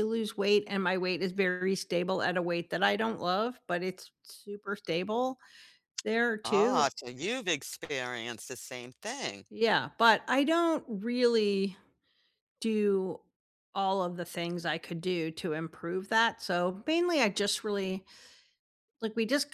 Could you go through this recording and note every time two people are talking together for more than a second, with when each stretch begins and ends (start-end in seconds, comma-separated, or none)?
none